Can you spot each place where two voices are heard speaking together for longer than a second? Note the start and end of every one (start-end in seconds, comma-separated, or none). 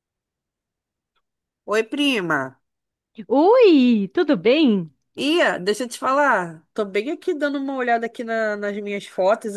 none